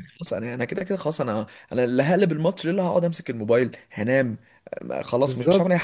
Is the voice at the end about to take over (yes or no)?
yes